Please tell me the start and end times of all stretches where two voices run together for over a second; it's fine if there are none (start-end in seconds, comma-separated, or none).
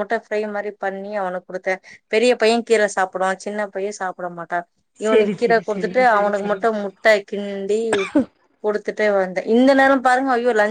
5.1-6.9